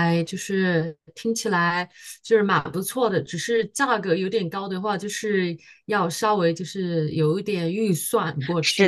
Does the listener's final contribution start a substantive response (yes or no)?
yes